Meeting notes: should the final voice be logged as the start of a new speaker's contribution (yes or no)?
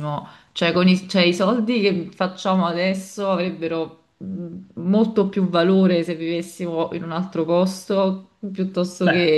yes